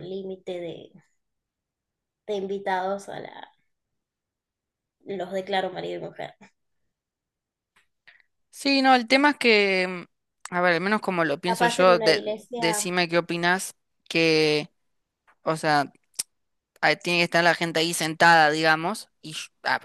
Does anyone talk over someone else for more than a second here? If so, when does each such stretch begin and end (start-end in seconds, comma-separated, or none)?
11.4-12.9